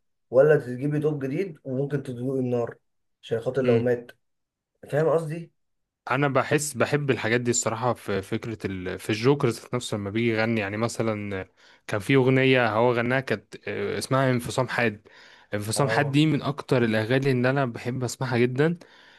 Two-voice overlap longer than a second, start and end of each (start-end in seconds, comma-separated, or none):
none